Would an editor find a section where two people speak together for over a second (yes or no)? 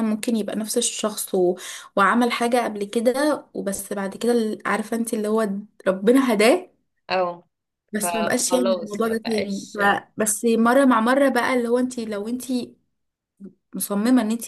yes